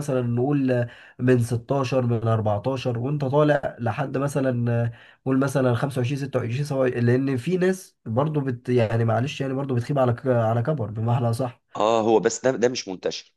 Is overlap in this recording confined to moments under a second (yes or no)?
yes